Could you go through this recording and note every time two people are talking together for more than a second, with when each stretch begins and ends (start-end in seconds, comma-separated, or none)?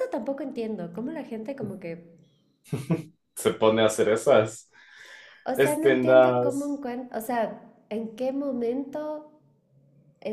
5.6-6.8